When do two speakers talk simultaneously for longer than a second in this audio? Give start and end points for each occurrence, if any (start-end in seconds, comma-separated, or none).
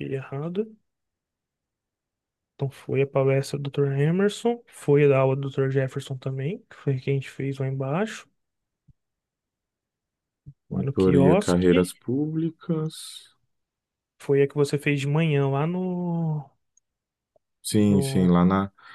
10.7-12.0